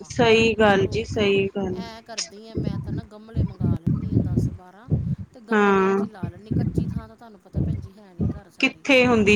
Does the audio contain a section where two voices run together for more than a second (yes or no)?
no